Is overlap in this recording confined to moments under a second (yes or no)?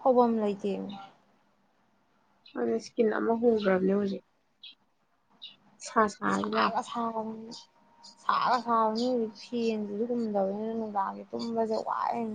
yes